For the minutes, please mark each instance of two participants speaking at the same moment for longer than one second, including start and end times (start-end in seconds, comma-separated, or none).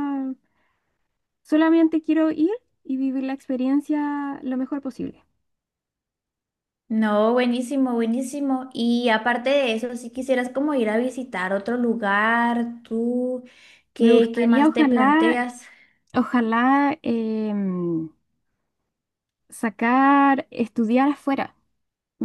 14.0-15.4